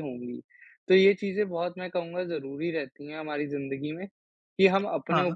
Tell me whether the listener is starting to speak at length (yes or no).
no